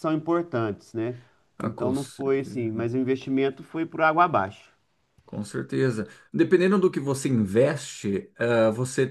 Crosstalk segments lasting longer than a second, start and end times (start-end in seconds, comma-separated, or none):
1.6-2.9